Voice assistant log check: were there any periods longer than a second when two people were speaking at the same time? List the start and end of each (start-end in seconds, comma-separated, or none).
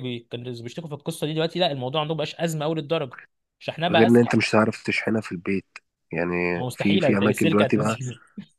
6.5-8.0